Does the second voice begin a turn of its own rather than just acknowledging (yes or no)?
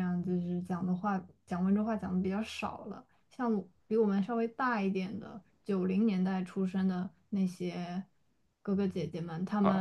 yes